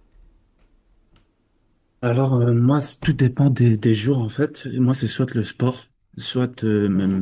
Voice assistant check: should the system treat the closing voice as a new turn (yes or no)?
no